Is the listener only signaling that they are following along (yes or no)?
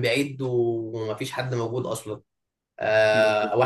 yes